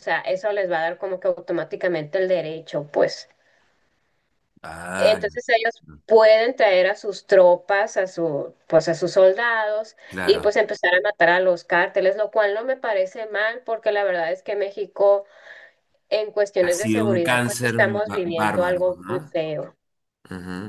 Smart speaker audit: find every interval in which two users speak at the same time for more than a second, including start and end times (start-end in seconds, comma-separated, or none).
16.6-19.4